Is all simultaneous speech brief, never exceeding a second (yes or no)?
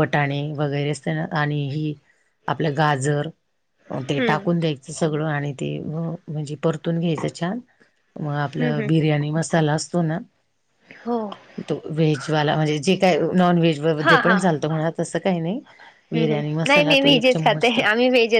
no